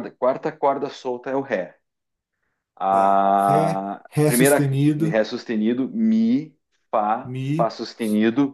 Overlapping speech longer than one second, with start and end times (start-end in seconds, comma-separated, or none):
2.9-5.2